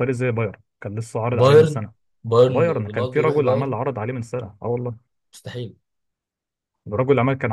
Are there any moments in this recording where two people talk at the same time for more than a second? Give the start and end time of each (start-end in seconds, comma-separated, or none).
2.5-3.8